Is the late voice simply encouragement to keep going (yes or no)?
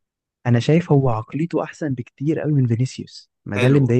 no